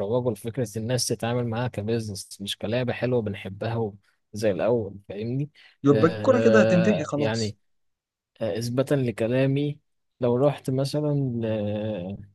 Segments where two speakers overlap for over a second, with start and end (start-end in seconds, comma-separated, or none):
5.9-7.6